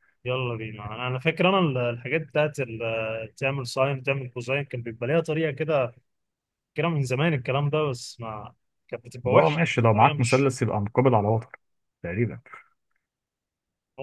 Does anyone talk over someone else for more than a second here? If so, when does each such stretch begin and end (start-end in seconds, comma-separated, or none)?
9.2-10.5